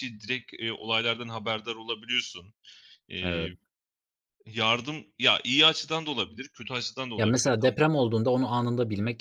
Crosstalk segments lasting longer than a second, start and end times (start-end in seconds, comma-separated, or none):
none